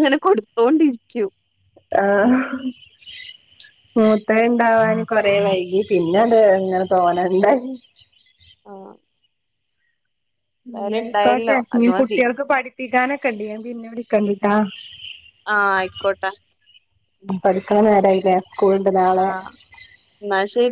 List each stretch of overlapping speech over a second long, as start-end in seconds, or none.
10.8-12.2